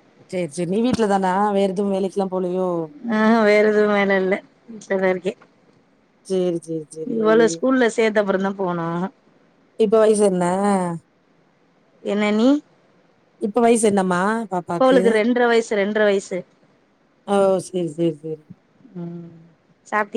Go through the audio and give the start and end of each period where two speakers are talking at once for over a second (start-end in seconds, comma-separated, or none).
none